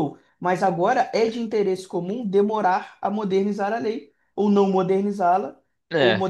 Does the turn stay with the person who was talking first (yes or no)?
yes